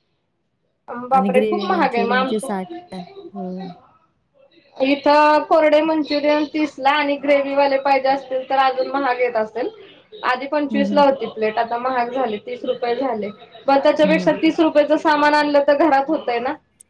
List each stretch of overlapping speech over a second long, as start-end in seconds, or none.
1.2-2.6